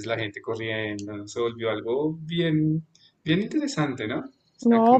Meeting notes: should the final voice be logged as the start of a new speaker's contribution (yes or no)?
yes